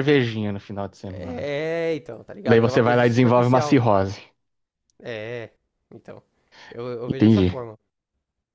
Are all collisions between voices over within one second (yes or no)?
no